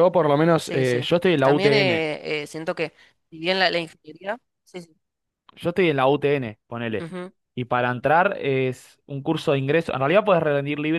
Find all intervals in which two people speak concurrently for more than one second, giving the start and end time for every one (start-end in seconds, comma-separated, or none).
0.6-2.0